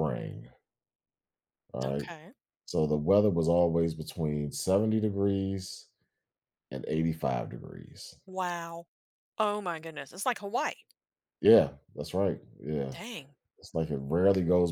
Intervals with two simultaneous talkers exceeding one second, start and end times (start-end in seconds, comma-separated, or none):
none